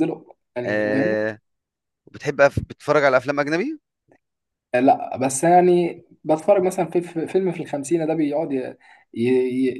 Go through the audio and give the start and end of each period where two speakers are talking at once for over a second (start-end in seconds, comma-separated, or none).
none